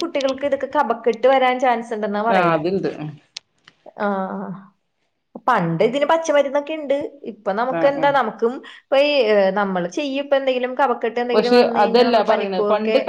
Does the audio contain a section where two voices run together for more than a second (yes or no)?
no